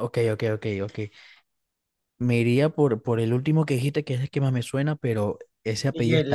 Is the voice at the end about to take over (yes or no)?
no